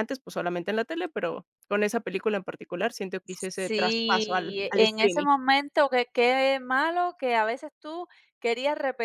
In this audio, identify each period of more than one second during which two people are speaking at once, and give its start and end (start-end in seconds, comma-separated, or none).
3.3-5.3